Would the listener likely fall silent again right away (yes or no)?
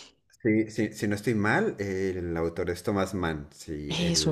yes